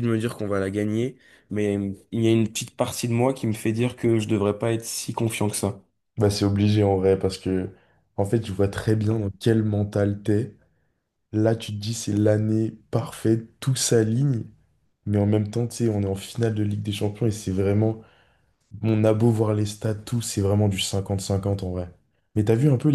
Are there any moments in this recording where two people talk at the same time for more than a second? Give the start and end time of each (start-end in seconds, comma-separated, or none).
none